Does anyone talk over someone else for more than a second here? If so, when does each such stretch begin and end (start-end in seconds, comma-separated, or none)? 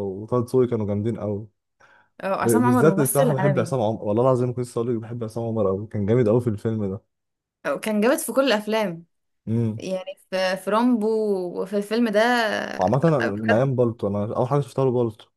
2.4-3.7